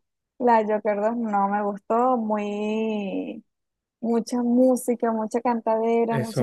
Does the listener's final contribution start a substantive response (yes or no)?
no